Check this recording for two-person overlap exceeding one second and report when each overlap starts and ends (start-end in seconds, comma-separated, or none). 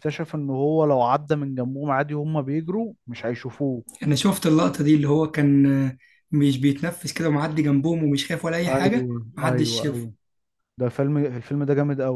8.7-10.1